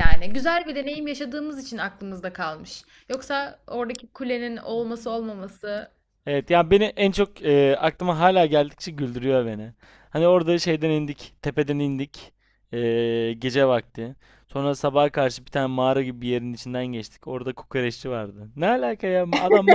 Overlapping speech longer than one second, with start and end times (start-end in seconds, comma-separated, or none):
none